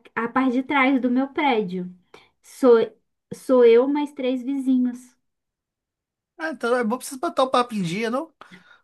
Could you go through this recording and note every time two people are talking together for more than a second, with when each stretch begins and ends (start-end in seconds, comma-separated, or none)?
none